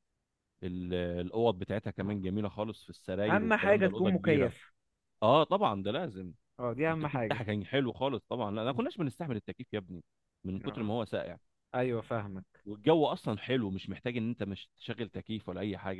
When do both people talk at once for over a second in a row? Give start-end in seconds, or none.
3.3-4.5